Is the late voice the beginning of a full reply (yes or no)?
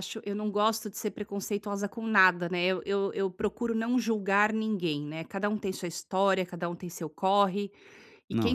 no